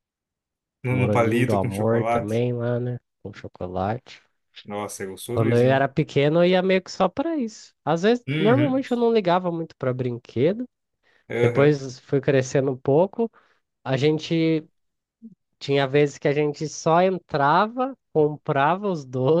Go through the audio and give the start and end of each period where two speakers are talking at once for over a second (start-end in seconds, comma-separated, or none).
0.9-2.4